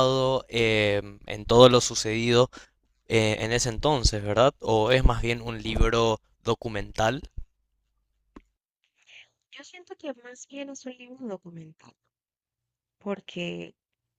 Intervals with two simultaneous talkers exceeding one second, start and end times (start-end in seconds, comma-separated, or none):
none